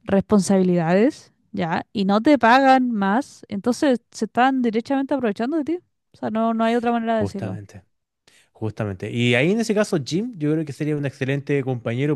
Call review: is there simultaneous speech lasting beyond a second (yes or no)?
no